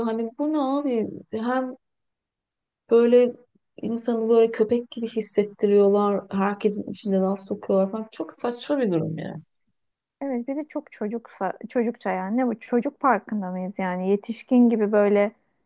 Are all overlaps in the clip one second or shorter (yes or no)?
yes